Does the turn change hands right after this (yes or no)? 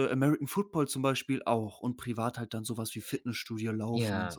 yes